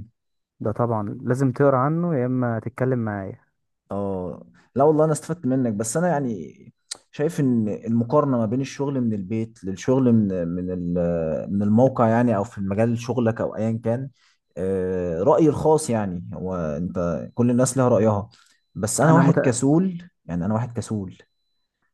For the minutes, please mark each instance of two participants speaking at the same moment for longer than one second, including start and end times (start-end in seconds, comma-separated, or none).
none